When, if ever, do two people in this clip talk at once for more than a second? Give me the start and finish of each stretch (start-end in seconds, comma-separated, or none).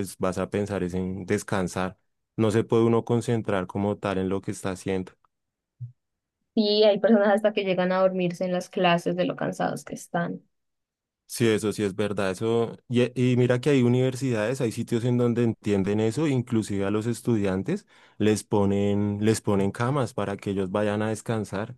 none